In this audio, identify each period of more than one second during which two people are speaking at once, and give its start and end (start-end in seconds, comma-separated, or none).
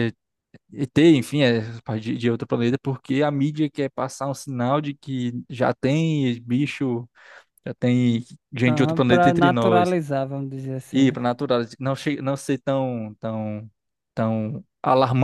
8.7-9.9